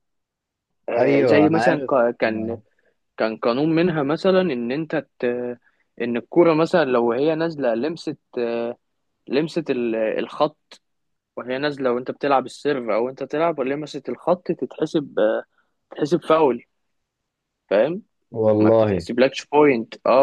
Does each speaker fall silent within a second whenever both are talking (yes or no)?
no